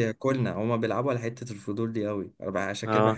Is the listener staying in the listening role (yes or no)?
yes